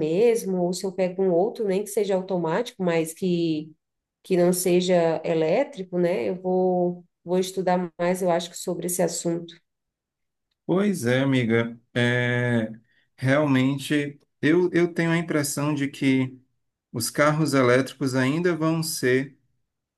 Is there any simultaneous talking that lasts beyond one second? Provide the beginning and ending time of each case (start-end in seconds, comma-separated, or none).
none